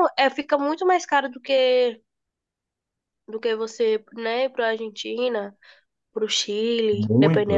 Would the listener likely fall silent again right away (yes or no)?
no